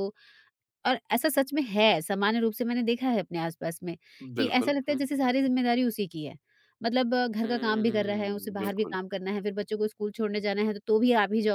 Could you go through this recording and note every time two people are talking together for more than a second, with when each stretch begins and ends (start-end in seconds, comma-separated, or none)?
7.4-9.0